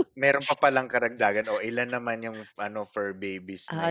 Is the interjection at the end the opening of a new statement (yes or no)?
yes